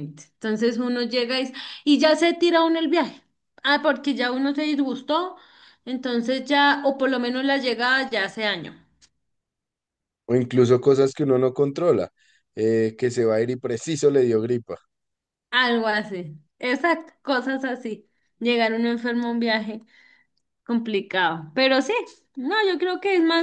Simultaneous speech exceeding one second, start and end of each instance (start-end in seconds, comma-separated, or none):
none